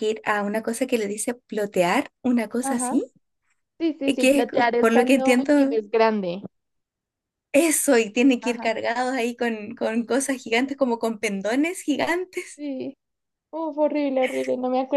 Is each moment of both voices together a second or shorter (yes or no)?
no